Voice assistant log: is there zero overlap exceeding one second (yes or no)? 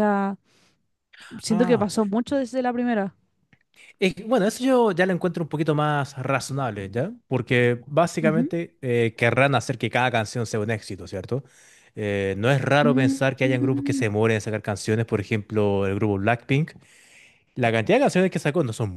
no